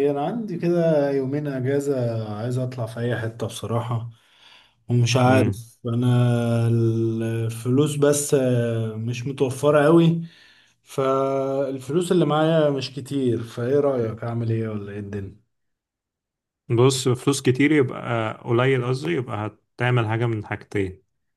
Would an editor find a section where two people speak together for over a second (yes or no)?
no